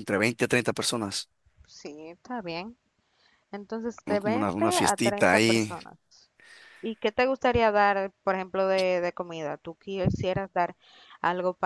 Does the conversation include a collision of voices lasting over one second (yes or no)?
yes